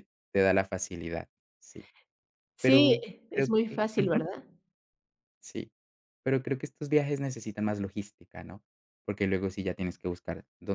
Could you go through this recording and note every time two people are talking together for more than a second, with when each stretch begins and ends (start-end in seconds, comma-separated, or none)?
2.6-4.3